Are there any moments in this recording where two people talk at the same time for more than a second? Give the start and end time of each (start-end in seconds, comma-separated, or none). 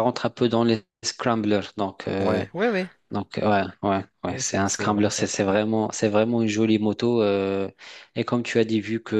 4.3-5.6